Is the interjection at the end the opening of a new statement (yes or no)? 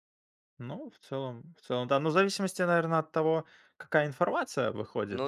no